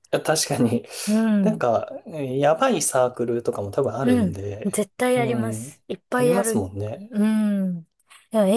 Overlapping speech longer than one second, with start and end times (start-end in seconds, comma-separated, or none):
4.0-7.1